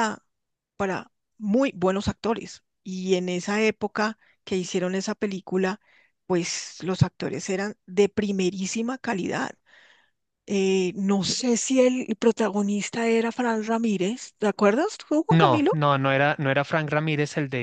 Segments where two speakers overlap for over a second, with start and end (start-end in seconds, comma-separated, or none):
none